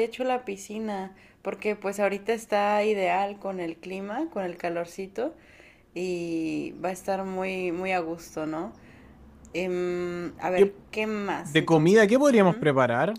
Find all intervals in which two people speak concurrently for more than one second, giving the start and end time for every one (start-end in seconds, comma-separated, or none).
11.4-12.7